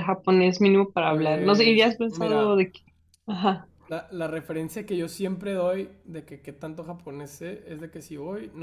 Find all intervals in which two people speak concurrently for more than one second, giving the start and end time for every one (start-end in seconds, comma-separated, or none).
1.1-2.7